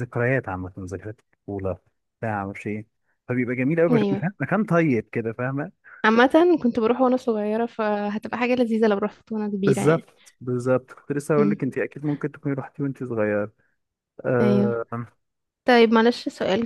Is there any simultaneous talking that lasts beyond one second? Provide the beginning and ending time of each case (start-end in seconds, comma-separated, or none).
none